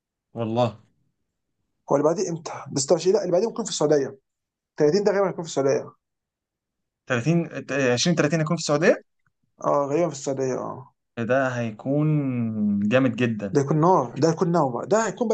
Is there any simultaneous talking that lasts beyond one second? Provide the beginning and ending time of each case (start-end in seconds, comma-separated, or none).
none